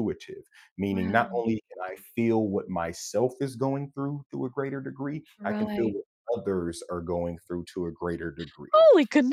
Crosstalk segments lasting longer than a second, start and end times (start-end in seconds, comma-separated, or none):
none